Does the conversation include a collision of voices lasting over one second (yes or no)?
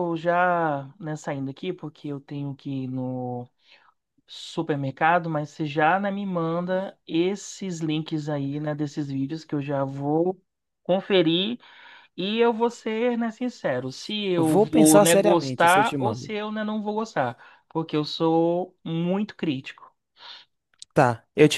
yes